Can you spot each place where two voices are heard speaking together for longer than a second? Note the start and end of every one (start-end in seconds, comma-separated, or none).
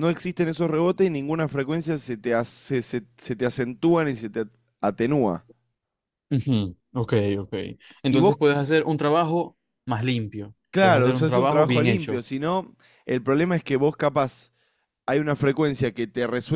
10.7-12.2